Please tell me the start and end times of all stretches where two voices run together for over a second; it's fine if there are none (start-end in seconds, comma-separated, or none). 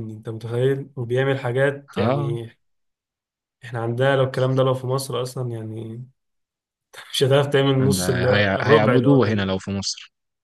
7.8-9.5